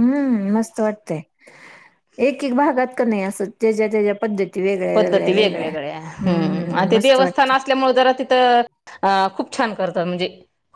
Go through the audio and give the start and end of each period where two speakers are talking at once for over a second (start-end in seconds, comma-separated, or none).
4.9-7.5